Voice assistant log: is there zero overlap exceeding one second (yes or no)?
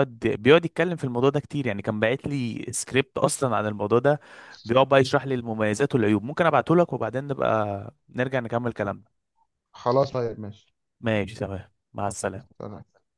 yes